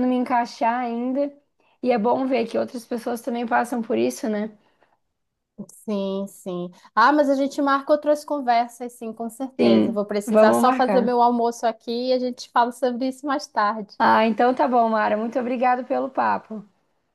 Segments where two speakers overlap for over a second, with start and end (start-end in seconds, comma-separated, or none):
9.6-11.2